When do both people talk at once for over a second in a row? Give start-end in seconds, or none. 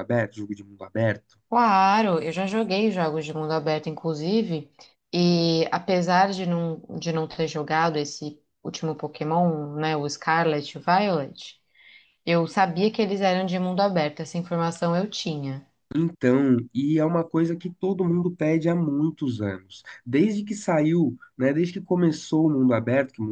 none